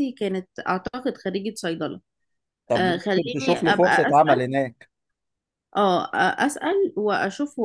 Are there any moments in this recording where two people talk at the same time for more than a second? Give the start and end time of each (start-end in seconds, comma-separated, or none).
2.8-4.5